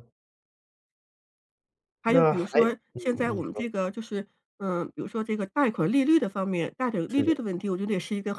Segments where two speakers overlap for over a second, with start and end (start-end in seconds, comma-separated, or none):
2.1-3.7